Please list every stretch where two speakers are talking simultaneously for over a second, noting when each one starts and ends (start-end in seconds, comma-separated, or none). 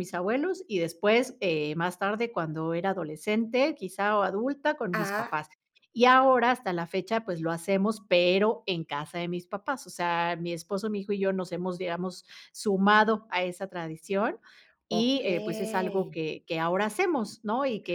14.9-16.2